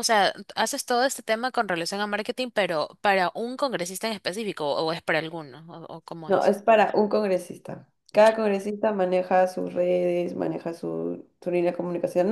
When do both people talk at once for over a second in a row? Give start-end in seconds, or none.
none